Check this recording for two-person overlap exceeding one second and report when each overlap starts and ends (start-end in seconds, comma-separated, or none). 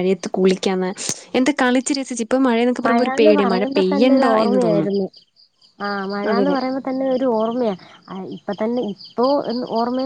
2.9-4.9